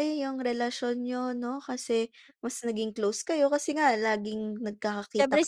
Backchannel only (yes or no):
no